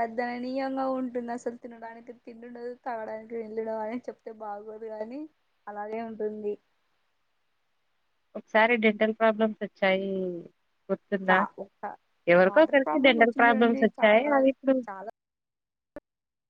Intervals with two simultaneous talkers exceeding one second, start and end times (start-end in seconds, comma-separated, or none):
12.5-14.3